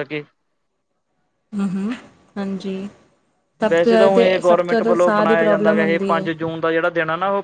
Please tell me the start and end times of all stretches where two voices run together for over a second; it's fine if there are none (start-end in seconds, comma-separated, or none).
3.7-6.2